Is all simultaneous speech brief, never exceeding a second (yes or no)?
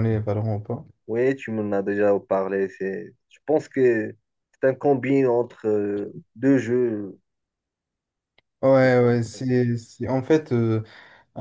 yes